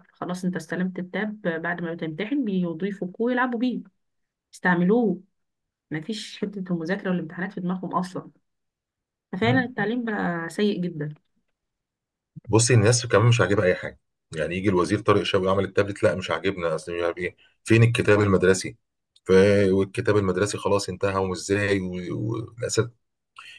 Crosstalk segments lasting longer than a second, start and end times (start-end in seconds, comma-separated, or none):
none